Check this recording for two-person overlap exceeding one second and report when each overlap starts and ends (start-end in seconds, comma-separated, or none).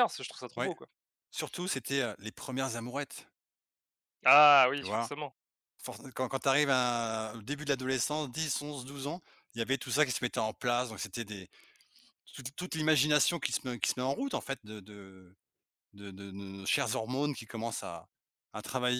none